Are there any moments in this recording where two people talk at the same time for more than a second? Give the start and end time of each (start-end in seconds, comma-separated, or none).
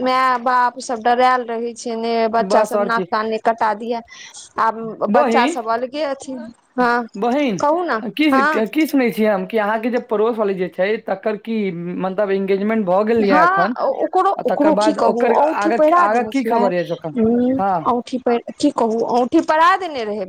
14.4-16.6